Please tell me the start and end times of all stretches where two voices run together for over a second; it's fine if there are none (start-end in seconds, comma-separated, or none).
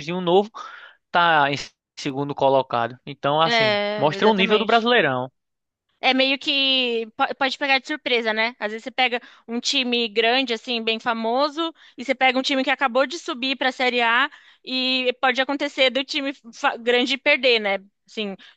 3.4-4.9